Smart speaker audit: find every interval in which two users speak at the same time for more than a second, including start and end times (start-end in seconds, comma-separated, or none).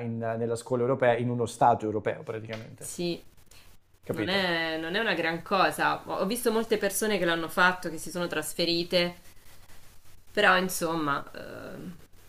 none